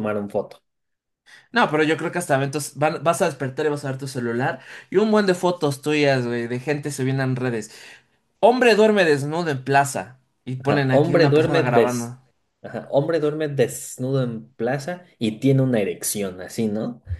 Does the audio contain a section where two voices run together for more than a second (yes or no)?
yes